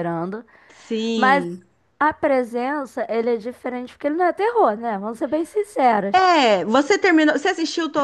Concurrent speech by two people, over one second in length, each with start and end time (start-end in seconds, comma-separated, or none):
none